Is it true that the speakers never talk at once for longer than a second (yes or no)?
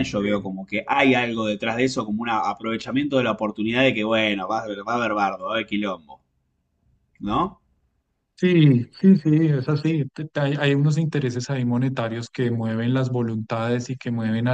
yes